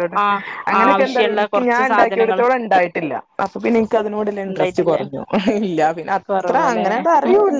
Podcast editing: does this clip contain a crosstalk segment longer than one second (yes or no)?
yes